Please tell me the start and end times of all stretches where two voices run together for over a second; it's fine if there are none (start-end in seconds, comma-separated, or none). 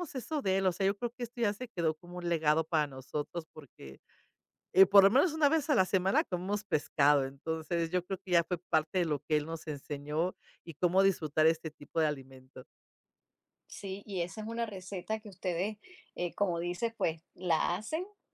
none